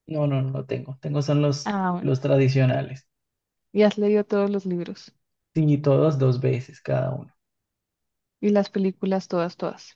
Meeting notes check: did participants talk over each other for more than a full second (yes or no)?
no